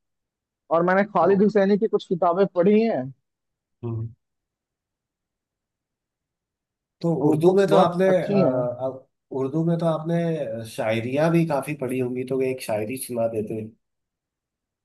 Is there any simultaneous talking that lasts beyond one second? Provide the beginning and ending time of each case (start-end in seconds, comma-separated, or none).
7.2-8.7